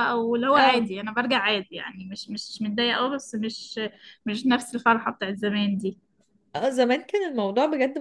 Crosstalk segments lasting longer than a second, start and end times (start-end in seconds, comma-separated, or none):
none